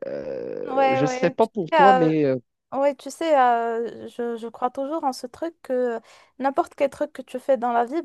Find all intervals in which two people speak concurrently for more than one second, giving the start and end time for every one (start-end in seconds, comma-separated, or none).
0.7-2.1